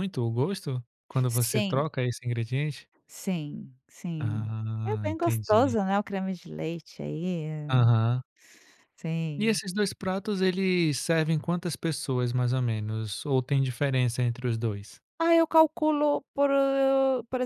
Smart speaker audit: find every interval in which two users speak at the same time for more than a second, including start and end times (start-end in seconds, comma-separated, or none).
4.2-5.8